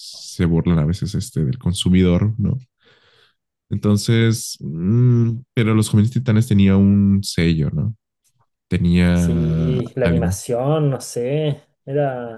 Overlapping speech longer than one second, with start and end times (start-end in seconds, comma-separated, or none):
9.1-10.4